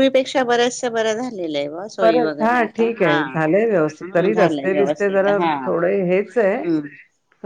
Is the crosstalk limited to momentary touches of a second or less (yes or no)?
no